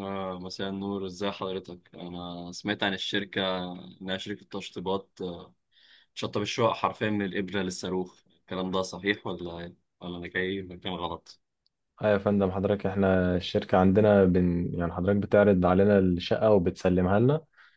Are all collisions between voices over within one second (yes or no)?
yes